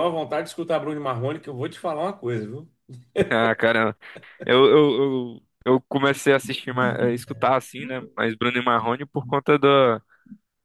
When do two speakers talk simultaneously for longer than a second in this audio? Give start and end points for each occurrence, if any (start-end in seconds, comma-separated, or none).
none